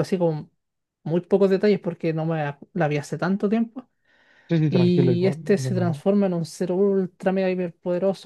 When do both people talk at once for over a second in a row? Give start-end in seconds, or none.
4.7-6.0